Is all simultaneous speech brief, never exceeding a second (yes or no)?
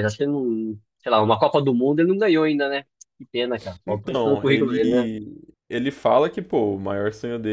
no